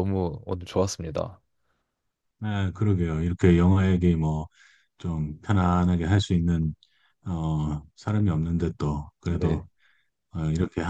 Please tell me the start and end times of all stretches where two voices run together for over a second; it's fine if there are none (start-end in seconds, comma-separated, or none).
none